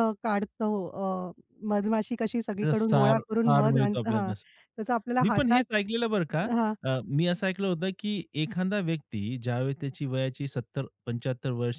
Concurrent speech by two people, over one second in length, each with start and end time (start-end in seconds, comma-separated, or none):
2.6-4.3